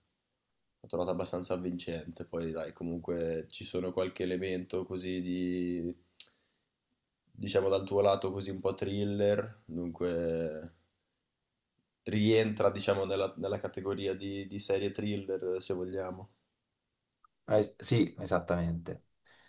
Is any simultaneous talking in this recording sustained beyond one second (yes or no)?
no